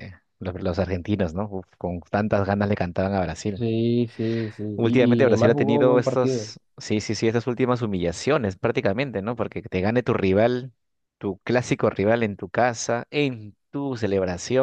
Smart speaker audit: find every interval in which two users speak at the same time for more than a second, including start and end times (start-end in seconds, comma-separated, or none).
4.7-6.5